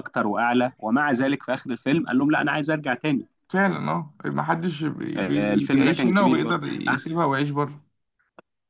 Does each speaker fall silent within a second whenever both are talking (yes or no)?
no